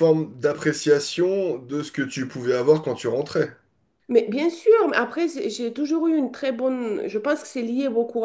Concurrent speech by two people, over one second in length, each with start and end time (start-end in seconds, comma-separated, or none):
none